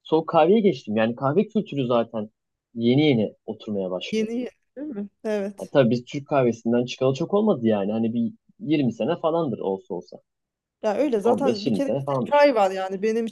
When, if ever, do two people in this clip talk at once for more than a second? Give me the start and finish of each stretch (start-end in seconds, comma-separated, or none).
11.2-12.4